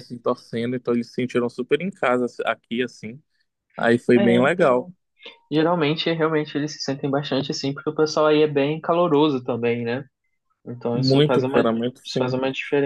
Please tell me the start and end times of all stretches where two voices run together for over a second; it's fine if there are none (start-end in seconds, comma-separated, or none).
10.9-12.3